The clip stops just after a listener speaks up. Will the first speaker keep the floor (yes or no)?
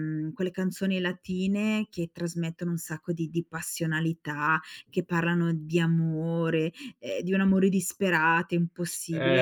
no